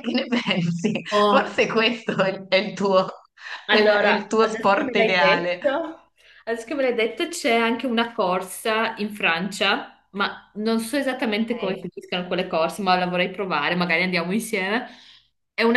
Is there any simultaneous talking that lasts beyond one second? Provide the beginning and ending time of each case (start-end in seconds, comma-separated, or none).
3.7-5.6